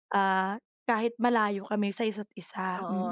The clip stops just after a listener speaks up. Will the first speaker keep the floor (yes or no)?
no